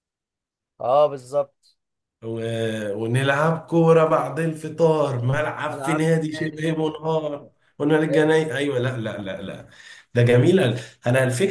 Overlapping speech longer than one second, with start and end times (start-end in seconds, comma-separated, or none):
5.7-7.2